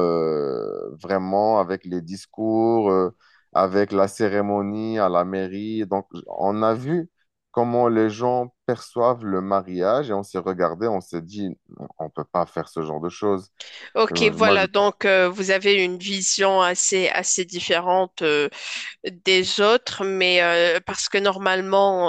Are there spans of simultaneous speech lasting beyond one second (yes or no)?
no